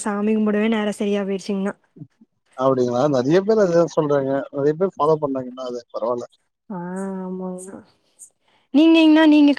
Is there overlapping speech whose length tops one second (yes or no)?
no